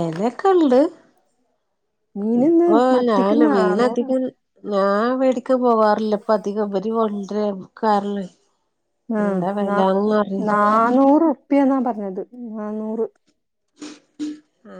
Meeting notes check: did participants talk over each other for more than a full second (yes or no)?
yes